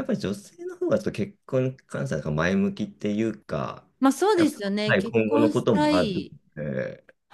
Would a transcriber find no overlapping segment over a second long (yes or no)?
no